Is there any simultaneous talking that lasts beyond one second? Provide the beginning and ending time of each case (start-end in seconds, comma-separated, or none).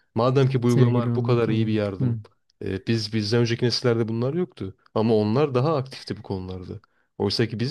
0.6-2.2